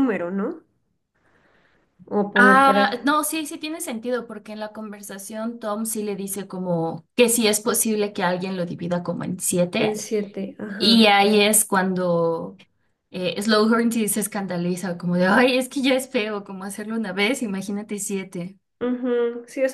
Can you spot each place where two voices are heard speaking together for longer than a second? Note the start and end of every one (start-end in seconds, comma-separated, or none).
none